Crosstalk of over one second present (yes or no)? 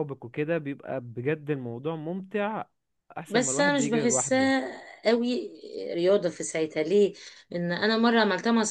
yes